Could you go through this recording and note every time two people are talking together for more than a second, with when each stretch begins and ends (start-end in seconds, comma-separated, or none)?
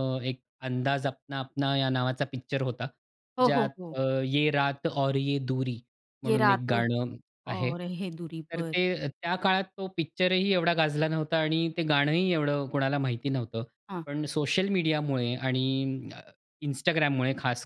none